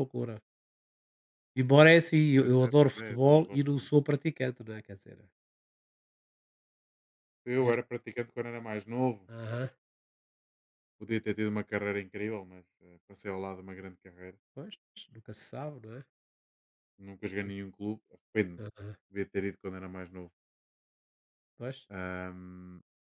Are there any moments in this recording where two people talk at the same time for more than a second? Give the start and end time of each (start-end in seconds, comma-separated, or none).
2.4-3.9